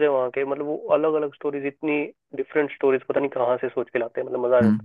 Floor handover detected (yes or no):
yes